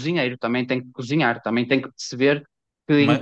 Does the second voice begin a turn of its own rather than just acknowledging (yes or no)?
no